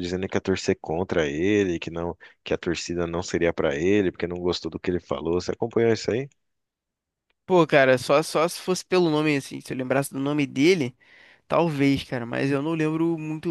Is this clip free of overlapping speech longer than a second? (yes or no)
yes